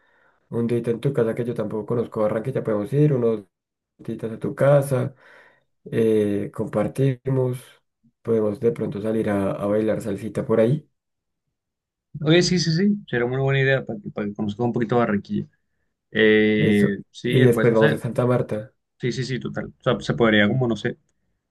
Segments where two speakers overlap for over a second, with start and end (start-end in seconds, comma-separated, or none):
16.6-18.0